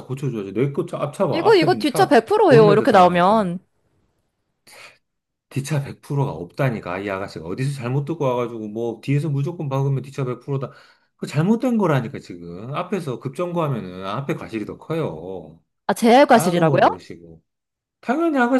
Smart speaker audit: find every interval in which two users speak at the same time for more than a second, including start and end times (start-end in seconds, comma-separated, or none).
1.3-3.5